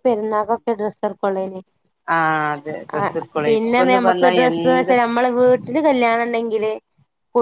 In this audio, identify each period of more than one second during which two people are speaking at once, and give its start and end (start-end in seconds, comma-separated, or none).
3.0-4.9